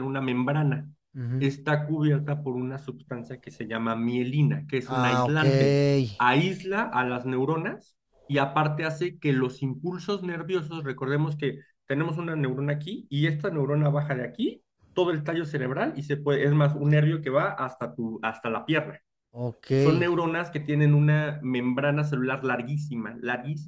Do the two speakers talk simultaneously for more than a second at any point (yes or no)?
no